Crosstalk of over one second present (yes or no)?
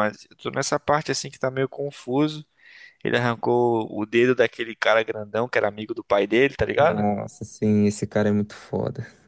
no